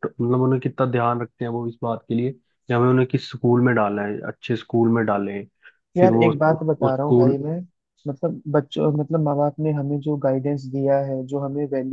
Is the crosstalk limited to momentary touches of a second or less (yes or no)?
no